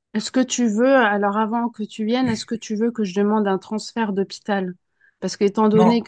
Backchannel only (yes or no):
yes